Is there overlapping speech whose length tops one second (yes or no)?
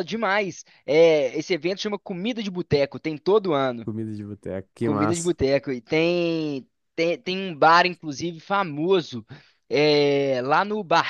no